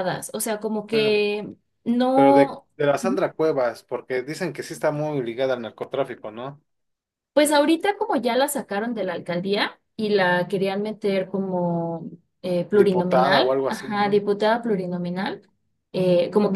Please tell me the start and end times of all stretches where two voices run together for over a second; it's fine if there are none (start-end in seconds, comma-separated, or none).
12.7-14.2